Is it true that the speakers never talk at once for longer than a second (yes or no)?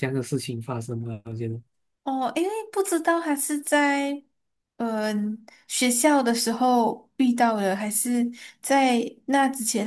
yes